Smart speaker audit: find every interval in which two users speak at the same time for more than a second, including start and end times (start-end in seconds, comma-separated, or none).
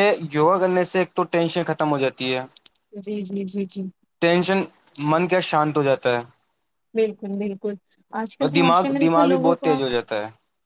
8.4-9.8